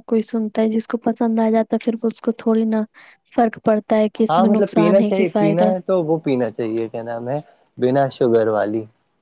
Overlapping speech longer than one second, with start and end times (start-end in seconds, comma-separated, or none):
4.3-5.7